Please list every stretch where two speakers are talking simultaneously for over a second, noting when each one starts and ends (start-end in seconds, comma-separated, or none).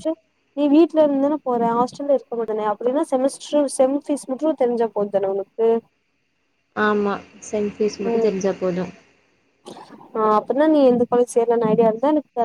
none